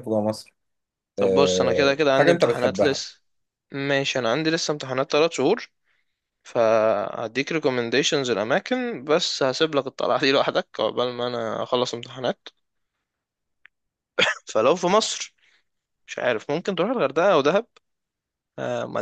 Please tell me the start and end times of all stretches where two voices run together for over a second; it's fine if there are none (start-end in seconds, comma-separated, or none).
1.2-3.0